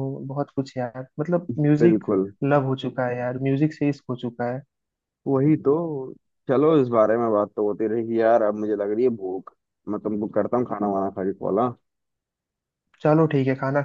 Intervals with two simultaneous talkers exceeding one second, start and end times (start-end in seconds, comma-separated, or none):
none